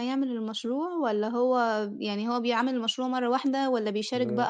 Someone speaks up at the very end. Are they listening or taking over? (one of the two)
listening